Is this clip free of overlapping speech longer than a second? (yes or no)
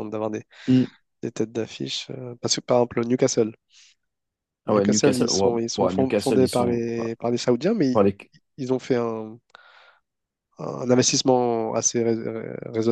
no